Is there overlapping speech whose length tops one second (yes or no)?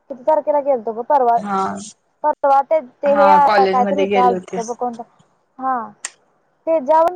yes